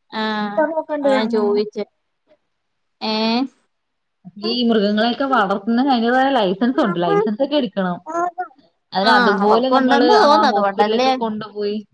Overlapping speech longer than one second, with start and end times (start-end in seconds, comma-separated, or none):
9.1-11.1